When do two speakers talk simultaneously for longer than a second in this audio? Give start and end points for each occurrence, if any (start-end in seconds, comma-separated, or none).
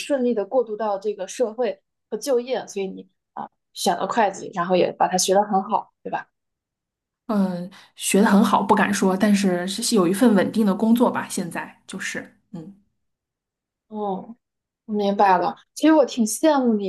none